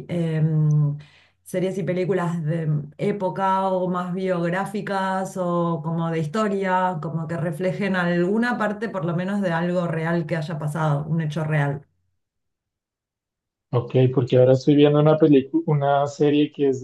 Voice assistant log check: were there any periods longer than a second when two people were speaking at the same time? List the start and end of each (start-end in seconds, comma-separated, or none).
none